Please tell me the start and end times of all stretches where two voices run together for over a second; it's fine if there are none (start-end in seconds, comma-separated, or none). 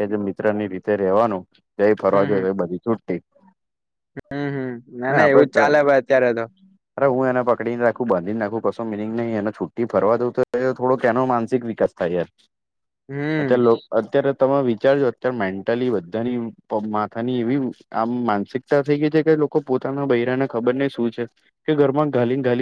none